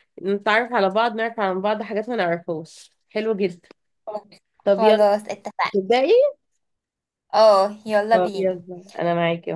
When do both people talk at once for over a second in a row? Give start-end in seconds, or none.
none